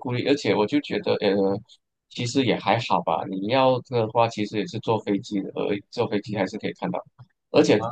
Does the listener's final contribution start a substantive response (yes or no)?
no